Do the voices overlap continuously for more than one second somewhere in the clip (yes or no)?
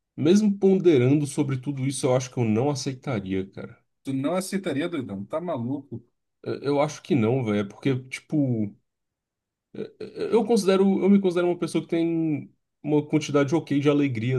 no